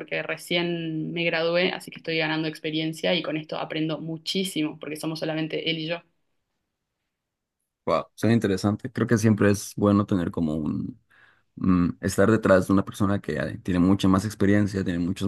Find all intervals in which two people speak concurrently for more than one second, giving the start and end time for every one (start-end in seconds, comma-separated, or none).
none